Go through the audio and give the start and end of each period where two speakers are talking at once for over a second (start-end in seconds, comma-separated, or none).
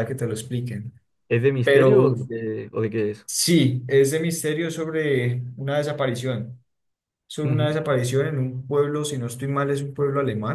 none